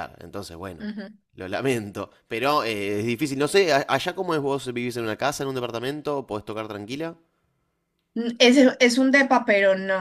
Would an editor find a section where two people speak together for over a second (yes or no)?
no